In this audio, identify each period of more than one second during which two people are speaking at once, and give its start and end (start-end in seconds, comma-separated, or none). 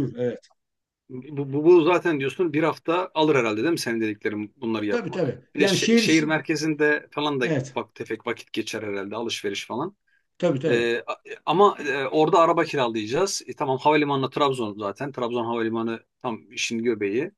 4.9-6.4